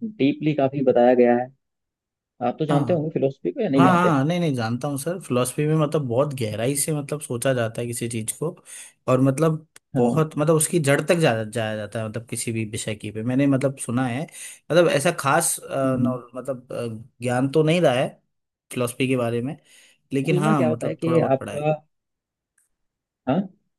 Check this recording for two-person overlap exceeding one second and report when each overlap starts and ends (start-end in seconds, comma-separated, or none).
20.2-21.7